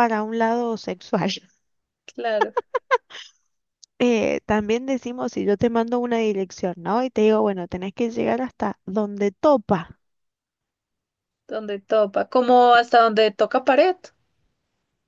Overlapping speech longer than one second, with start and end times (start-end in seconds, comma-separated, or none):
none